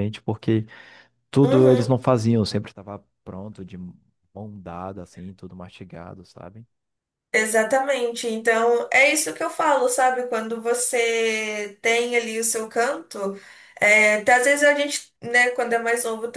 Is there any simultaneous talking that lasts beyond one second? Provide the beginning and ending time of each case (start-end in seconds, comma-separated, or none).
none